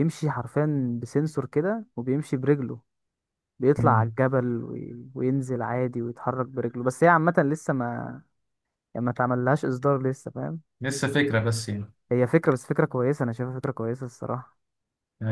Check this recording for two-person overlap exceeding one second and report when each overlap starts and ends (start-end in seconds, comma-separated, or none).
none